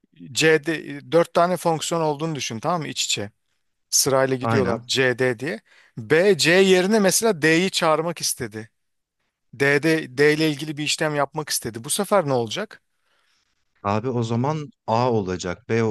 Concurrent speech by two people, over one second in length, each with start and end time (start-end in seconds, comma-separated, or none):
none